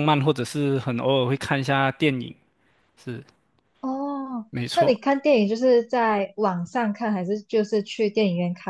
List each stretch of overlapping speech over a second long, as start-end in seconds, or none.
none